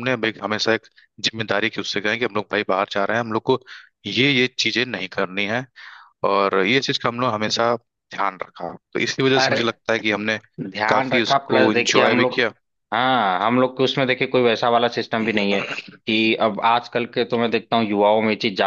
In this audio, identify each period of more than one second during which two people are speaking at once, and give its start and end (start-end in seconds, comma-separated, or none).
10.9-12.4